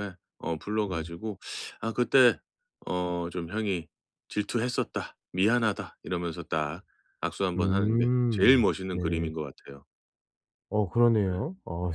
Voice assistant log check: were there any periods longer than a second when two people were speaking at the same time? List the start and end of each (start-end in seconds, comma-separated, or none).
7.5-9.3